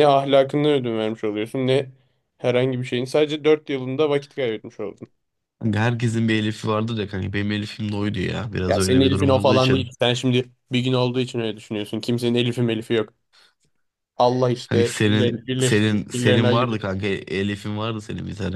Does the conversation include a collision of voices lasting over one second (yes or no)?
yes